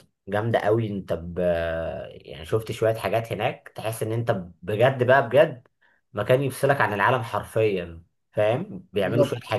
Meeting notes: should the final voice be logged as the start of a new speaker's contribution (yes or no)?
no